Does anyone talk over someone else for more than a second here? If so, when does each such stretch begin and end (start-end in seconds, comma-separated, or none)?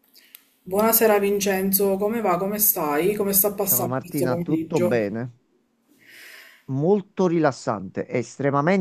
3.6-4.9